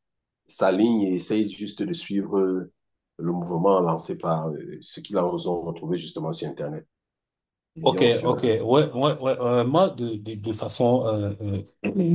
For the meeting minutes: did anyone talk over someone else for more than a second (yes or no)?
no